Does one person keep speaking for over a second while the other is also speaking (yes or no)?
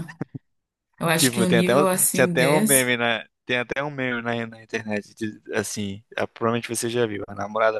yes